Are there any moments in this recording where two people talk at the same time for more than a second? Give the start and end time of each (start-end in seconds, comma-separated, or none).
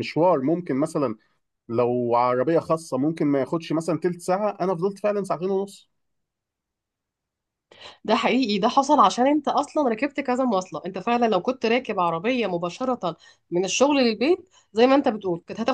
none